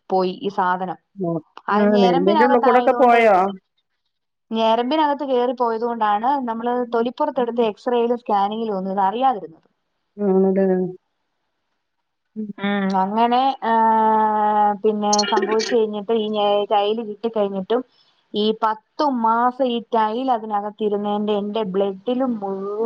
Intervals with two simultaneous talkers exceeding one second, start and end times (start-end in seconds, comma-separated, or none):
1.8-3.3